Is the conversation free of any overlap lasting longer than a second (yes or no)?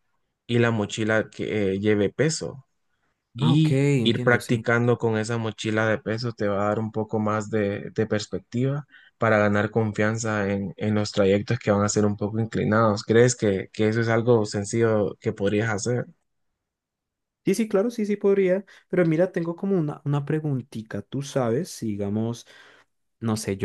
no